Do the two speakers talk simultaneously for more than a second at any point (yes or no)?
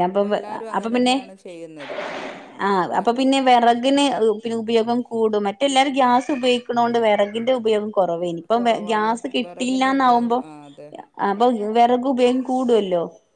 yes